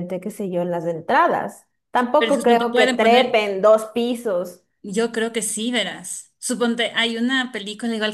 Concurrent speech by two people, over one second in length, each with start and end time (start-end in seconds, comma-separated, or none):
2.2-3.4